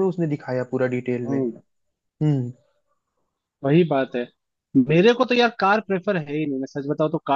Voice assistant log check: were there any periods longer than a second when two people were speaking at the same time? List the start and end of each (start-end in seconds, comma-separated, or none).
none